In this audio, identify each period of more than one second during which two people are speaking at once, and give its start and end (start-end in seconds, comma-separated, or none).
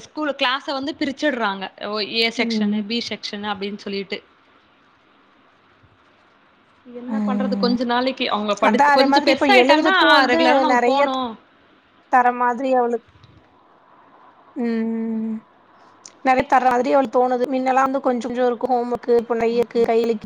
8.7-11.0